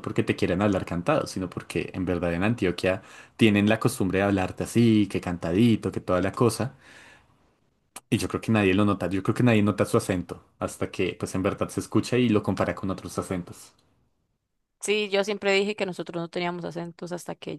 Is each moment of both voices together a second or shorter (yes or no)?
yes